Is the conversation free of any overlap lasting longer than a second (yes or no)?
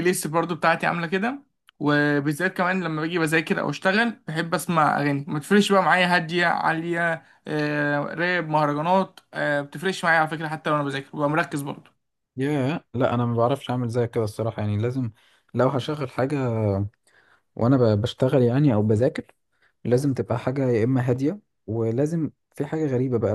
yes